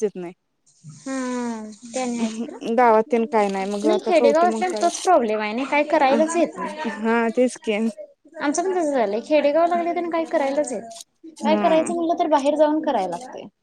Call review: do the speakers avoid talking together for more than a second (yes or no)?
no